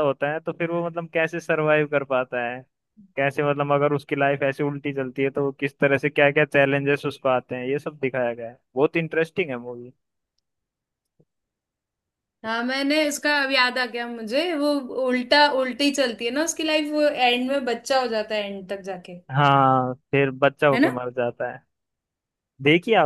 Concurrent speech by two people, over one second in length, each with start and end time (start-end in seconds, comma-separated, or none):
none